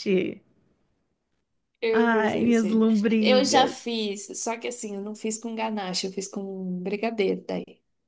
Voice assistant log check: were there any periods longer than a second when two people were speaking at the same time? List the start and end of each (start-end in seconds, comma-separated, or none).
1.9-3.8